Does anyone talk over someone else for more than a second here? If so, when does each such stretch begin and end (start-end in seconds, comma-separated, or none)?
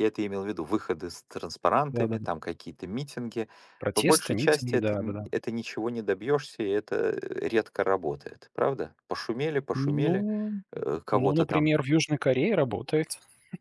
3.9-5.3